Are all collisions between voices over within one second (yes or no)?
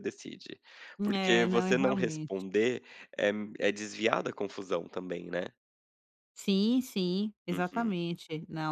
no